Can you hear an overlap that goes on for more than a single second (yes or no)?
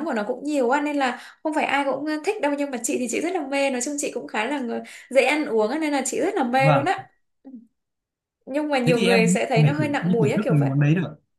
yes